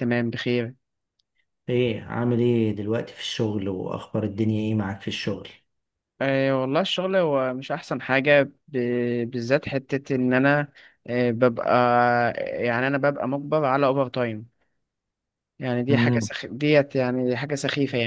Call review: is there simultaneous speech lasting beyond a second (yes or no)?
no